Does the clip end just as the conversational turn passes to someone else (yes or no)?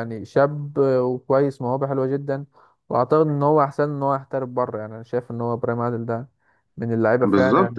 yes